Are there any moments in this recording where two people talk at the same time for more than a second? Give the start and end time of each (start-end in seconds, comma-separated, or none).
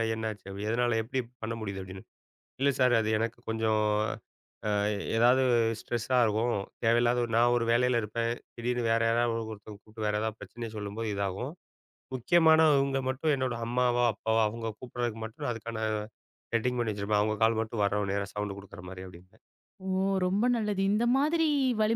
none